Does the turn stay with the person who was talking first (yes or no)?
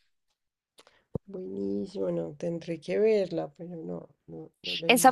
no